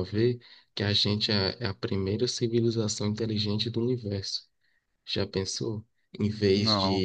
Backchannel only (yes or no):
yes